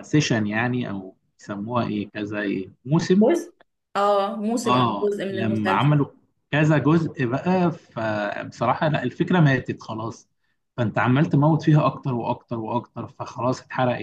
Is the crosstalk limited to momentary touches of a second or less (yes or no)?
no